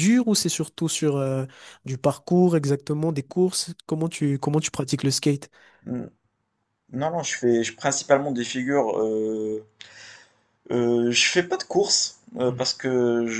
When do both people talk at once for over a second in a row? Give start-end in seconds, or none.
none